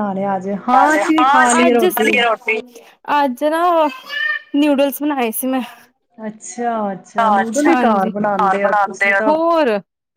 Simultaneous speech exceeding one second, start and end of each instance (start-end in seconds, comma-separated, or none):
7.2-9.3